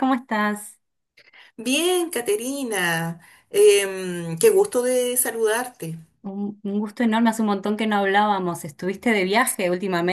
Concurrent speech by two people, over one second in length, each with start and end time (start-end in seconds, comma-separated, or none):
none